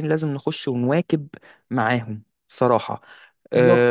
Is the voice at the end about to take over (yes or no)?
yes